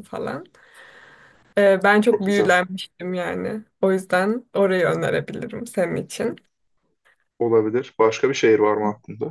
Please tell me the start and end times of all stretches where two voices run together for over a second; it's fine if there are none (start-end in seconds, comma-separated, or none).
none